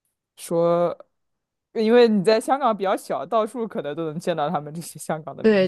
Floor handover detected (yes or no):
yes